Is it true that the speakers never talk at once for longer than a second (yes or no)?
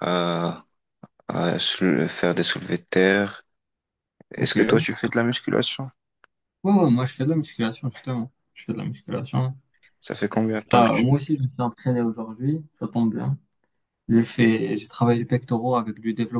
yes